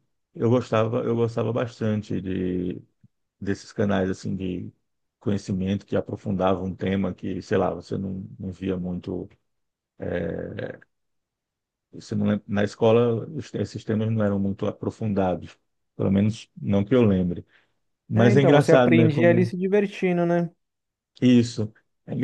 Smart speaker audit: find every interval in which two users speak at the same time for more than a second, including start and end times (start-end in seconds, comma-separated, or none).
18.1-19.5